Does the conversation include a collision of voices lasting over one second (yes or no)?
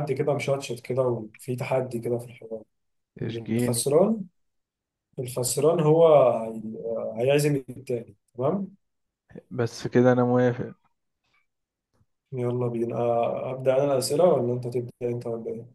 no